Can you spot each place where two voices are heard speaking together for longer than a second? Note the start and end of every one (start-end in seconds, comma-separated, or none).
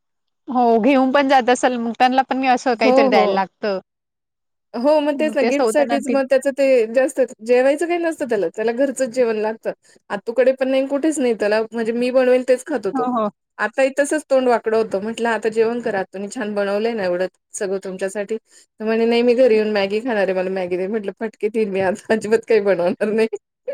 none